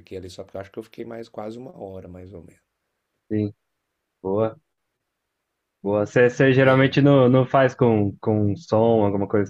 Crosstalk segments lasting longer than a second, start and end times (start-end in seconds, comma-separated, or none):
none